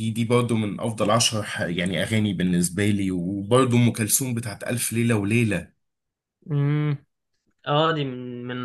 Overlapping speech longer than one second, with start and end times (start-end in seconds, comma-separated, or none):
none